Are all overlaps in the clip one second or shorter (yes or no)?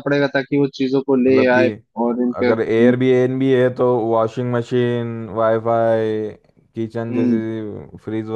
yes